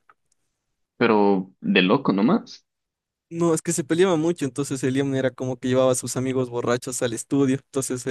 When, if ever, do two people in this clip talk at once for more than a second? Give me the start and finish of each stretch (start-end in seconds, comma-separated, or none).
none